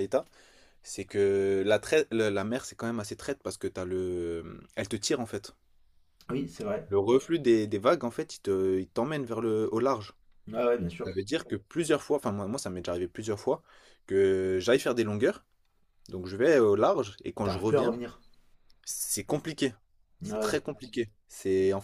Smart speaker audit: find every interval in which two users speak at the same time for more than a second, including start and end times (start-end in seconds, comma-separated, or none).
none